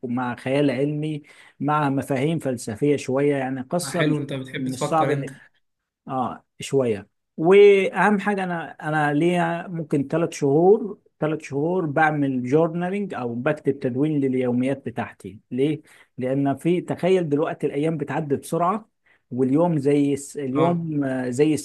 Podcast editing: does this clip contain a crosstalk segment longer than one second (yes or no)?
yes